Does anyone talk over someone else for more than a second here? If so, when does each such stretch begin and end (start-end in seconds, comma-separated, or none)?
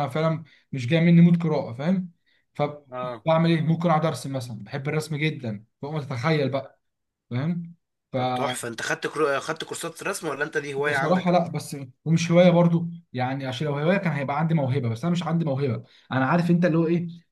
none